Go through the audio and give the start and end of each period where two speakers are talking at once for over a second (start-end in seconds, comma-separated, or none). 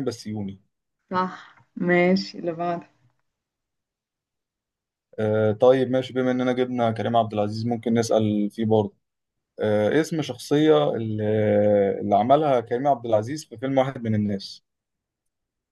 none